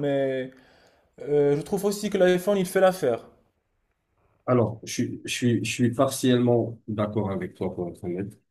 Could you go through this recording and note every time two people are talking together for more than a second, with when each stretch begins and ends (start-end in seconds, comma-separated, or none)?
none